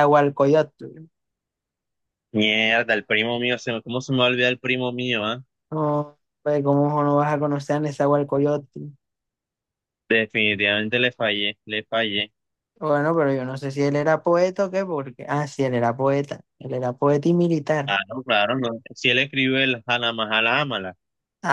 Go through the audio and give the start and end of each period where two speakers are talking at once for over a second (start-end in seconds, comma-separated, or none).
none